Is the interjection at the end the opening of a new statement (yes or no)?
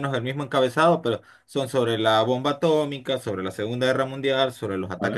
no